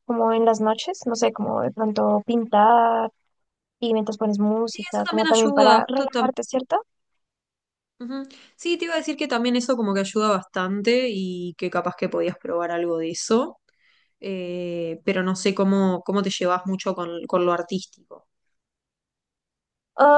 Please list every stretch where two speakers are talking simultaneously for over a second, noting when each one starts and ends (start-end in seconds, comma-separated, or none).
4.7-6.3